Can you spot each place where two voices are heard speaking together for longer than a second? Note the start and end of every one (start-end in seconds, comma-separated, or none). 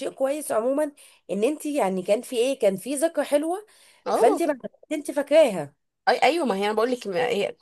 none